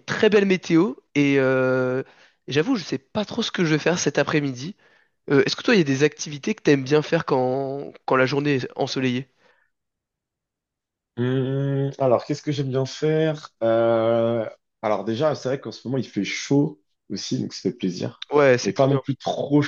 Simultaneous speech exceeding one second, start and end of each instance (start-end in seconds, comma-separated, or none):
none